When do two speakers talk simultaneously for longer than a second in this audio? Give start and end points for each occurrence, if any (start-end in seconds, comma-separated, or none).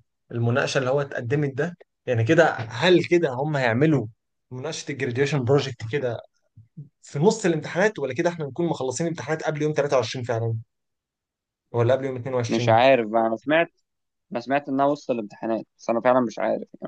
none